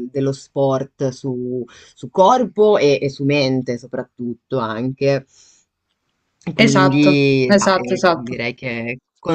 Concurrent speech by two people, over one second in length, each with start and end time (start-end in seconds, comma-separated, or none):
6.6-8.4